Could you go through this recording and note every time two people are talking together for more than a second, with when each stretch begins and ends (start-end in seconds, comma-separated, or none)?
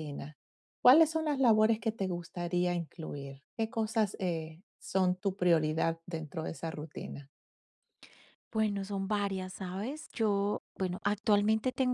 none